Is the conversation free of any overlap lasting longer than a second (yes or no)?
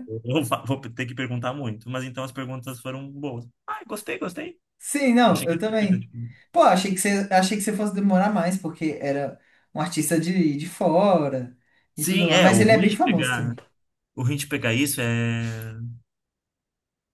no